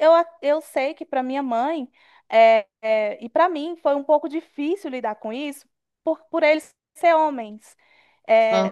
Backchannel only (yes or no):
yes